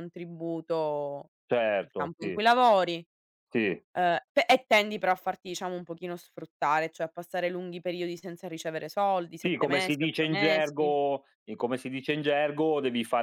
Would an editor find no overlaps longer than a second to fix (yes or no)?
no